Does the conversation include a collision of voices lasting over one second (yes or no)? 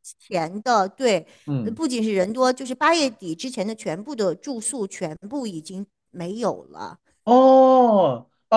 no